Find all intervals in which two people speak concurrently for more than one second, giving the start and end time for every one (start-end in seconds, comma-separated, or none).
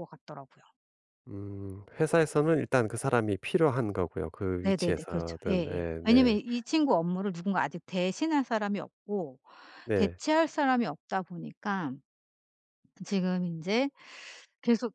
4.6-6.4